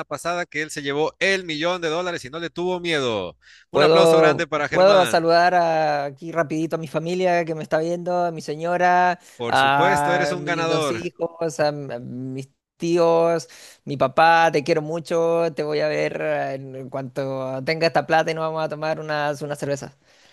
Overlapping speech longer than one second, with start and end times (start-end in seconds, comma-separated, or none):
3.7-5.3, 9.4-11.1